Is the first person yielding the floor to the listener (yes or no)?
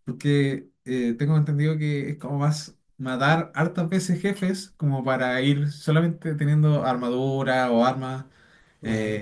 no